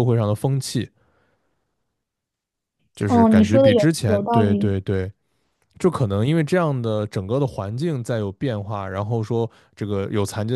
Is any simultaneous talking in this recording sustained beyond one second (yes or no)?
yes